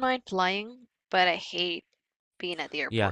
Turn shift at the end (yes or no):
yes